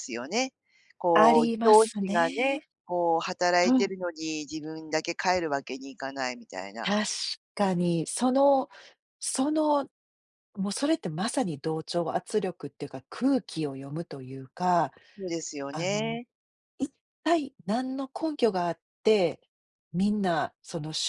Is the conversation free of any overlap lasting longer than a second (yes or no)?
no